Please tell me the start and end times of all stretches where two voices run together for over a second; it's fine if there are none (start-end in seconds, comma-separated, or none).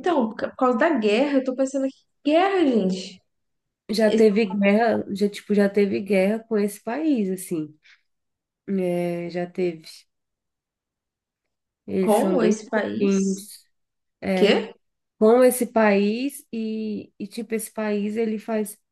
12.0-13.5